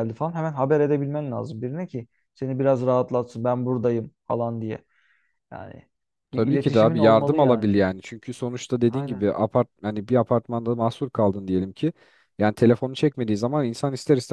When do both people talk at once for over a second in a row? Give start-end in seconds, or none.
6.3-7.7